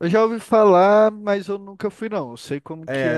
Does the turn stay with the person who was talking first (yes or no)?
no